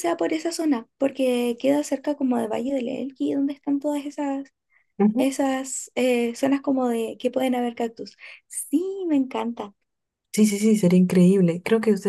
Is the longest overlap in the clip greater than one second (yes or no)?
no